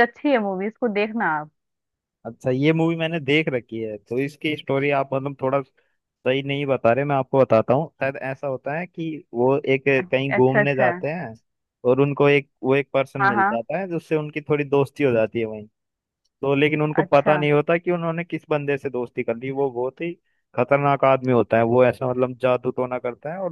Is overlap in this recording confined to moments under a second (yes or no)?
yes